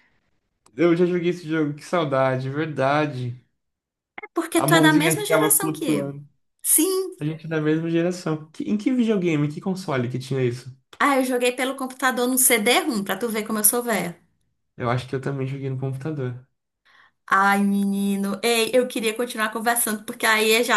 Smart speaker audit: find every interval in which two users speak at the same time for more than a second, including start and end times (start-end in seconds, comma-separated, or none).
4.6-6.2